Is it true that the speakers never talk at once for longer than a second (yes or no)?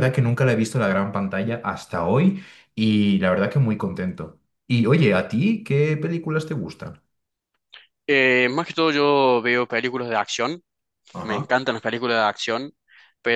yes